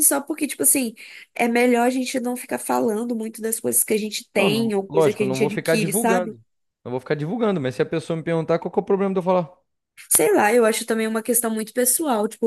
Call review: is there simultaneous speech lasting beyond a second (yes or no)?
yes